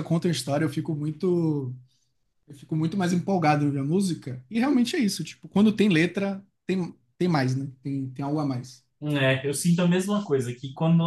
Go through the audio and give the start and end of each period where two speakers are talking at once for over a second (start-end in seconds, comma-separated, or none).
none